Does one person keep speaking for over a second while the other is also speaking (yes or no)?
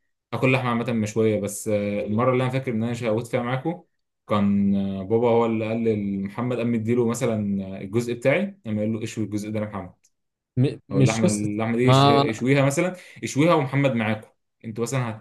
yes